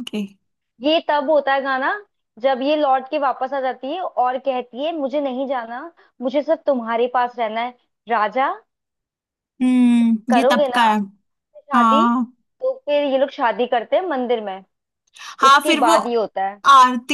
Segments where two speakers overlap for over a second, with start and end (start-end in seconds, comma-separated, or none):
none